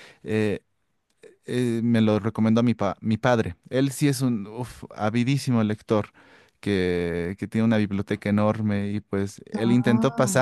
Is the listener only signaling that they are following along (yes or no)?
yes